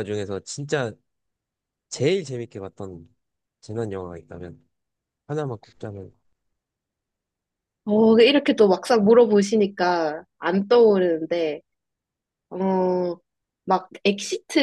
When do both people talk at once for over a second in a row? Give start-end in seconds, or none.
none